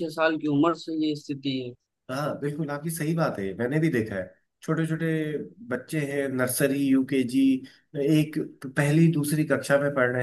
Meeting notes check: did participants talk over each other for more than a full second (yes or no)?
no